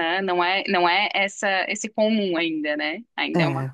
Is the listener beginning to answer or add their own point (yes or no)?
no